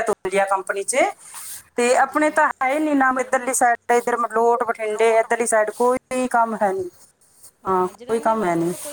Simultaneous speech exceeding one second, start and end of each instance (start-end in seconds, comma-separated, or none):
none